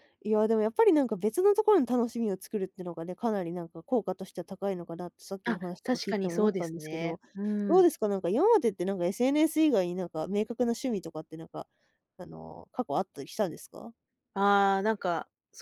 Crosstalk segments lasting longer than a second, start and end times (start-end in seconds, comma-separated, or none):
5.5-7.2